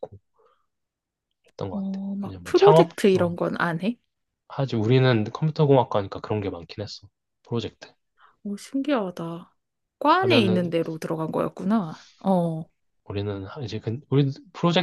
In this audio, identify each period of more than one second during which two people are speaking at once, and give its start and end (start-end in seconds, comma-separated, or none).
1.7-3.4